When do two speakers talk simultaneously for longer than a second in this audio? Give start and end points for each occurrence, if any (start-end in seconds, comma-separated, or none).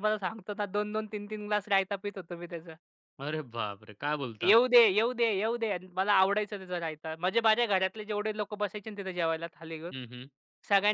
none